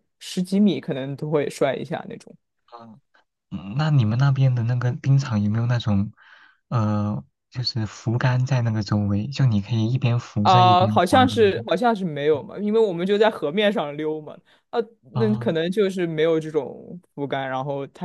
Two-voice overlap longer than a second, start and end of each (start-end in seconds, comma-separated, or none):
10.4-11.6